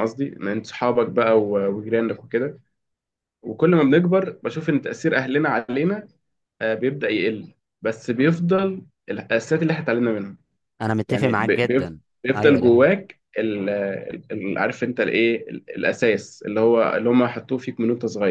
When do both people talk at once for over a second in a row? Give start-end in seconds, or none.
11.1-12.8